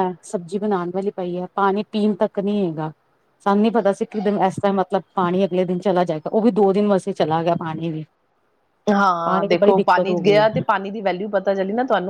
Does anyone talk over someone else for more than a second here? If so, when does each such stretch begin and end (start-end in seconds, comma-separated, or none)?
9.2-10.6